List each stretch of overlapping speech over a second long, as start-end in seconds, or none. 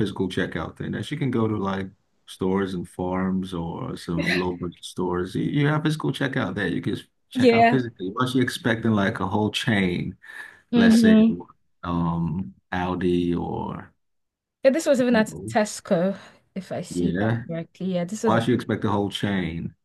none